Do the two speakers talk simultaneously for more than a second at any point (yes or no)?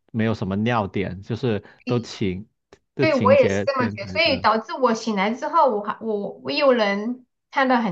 yes